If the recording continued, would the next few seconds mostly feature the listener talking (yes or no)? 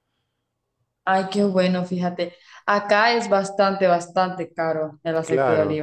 yes